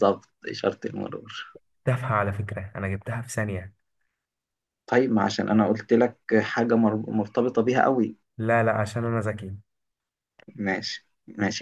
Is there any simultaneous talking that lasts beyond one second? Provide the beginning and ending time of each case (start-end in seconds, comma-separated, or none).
none